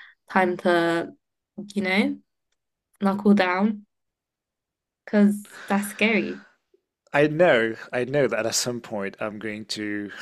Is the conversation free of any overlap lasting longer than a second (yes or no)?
yes